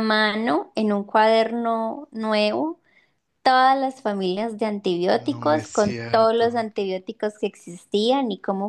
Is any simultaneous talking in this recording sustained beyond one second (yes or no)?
yes